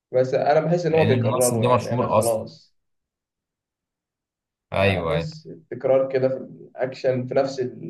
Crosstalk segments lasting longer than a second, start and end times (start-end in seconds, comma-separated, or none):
0.9-2.4